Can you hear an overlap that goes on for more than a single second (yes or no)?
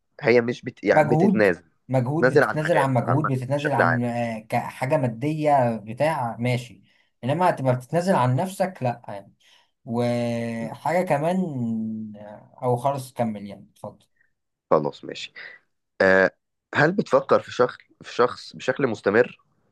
yes